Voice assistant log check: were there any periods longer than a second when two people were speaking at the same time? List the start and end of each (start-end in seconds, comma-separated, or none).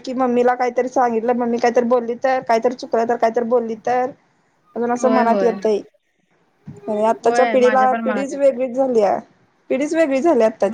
7.2-8.6